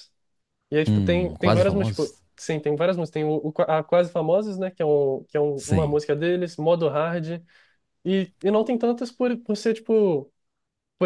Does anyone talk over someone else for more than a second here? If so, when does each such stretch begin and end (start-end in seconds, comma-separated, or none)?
0.8-2.2